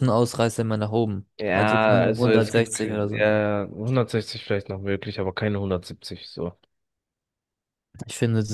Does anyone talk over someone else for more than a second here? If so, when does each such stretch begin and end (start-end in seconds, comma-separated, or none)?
1.4-3.3